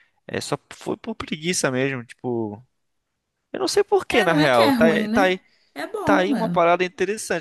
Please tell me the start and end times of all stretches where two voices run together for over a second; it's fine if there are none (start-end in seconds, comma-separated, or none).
4.1-5.4